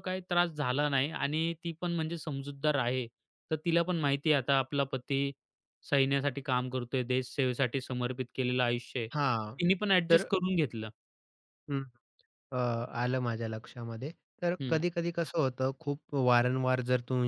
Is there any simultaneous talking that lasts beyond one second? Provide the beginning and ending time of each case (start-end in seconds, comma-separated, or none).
none